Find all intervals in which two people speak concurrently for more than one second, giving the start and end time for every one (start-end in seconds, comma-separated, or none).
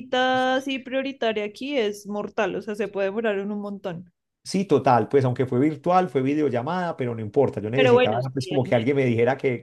7.7-8.9